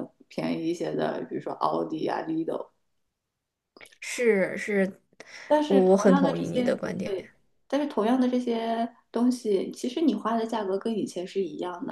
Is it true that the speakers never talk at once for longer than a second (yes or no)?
no